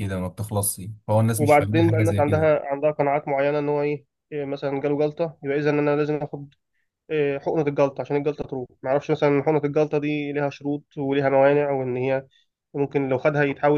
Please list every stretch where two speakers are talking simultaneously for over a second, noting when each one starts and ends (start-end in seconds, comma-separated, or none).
1.4-2.6